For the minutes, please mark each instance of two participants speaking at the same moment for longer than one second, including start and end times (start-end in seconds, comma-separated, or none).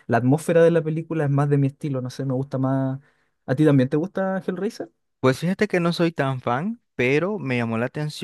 none